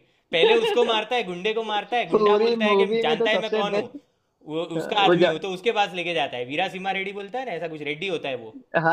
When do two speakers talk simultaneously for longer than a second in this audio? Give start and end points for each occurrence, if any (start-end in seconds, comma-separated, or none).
2.1-3.8